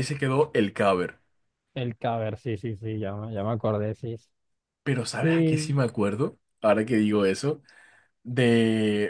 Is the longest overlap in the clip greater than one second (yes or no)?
no